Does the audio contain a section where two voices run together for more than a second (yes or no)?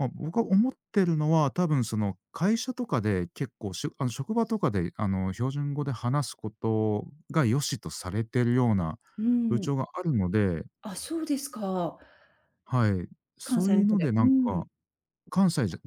yes